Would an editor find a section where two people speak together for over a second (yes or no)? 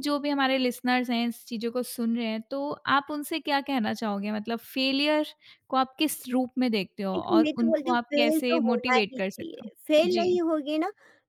yes